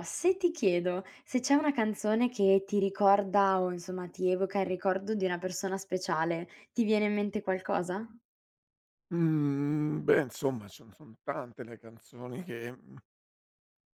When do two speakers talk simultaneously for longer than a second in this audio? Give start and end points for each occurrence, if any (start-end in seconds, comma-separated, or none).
none